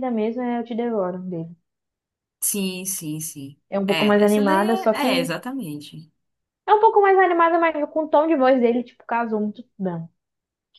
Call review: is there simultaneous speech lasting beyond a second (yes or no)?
yes